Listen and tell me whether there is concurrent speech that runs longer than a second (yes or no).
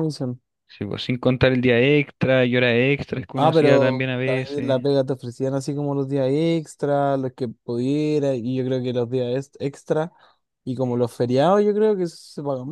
yes